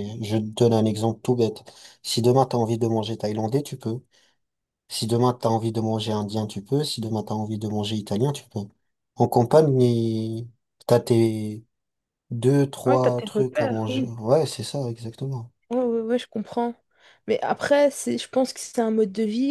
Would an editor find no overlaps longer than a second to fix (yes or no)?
no